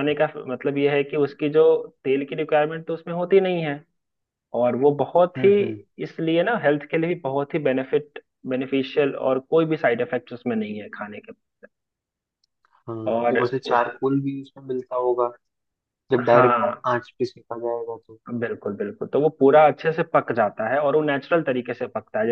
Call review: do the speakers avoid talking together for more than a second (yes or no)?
yes